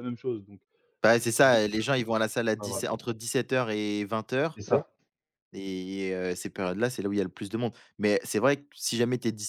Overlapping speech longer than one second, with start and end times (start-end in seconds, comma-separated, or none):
none